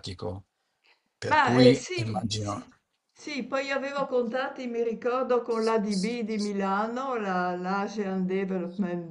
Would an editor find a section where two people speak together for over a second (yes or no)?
yes